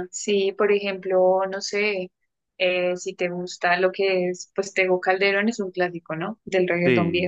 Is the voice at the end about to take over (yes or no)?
yes